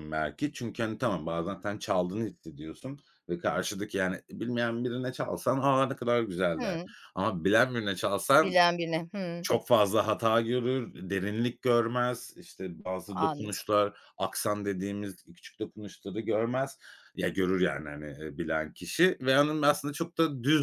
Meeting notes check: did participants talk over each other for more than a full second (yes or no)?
no